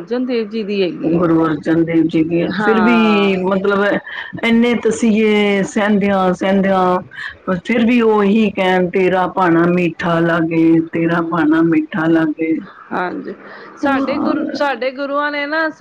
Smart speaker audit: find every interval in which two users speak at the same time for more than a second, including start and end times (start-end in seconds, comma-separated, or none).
none